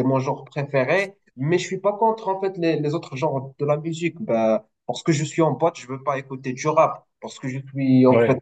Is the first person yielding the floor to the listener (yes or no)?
no